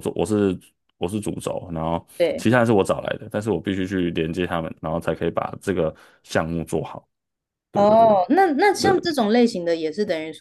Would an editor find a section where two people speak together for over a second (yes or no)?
no